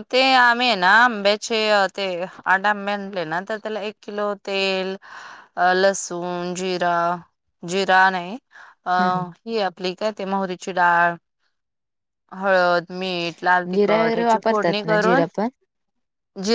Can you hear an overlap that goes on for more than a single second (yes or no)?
yes